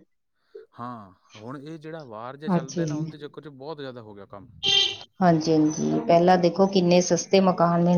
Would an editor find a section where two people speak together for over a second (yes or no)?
no